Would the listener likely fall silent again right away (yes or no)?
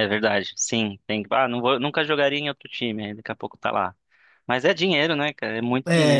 no